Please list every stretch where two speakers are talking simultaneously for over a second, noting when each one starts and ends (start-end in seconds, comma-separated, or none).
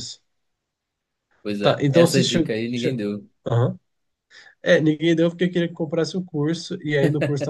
1.6-3.0